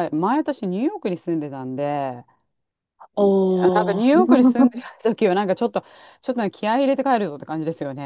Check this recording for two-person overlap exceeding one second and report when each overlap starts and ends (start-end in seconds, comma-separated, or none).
3.2-4.7